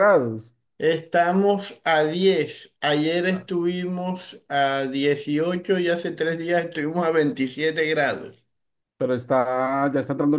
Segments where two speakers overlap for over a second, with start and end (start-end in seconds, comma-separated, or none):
none